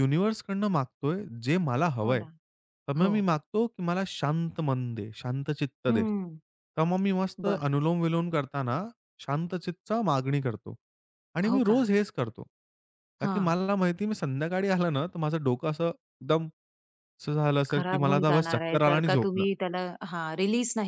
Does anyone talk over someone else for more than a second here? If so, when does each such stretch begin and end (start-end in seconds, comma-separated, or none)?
17.7-19.4